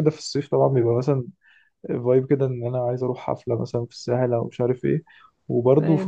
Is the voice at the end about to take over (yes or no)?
no